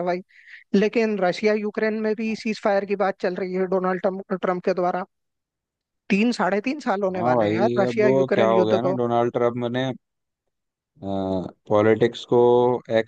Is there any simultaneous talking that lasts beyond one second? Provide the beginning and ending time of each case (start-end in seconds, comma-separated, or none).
7.1-9.0